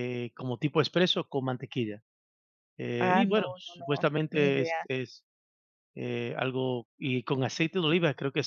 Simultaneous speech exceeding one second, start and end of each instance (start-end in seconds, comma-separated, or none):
3.0-4.9